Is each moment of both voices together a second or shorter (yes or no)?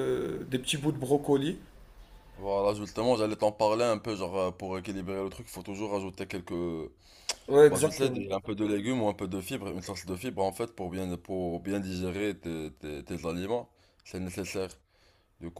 yes